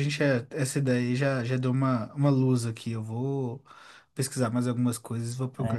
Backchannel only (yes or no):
no